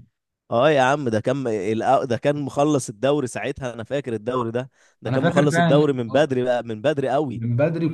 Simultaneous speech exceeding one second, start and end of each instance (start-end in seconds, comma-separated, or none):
5.1-6.3